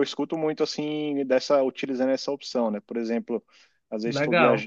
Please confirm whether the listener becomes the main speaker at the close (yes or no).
no